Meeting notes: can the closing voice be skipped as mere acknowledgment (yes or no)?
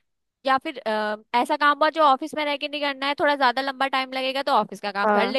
yes